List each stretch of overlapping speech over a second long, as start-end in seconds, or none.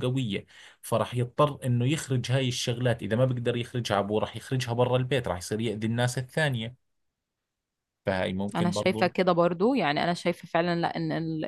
none